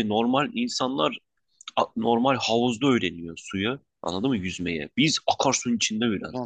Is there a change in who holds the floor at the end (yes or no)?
yes